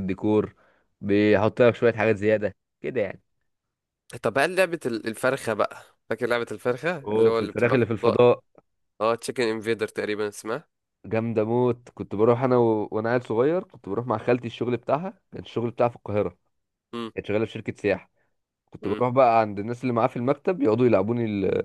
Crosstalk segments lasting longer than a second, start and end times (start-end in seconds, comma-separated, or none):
7.0-8.3